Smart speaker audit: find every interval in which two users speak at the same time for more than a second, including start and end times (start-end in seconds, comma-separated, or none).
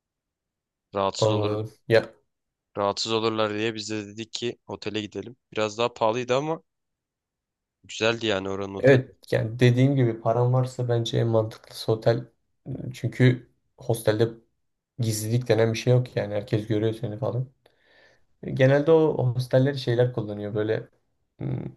none